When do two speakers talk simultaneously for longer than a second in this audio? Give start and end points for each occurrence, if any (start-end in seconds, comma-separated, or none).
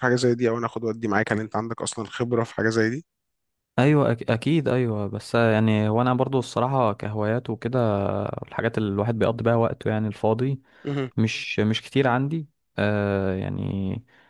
none